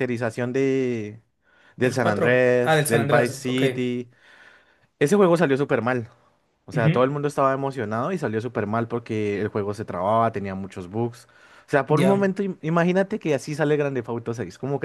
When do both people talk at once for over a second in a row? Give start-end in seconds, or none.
1.8-3.6